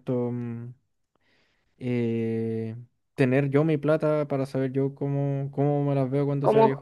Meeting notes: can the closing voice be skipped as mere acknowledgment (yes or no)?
no